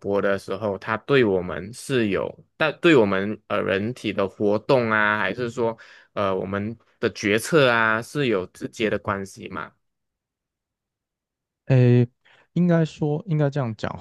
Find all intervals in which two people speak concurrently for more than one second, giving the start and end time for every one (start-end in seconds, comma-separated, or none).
none